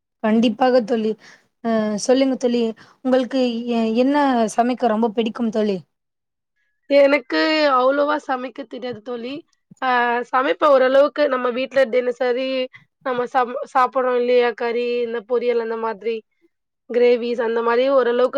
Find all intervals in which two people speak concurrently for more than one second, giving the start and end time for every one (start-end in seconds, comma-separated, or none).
none